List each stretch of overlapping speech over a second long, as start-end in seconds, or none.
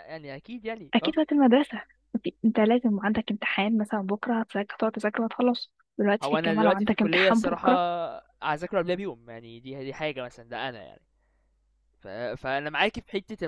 6.2-7.7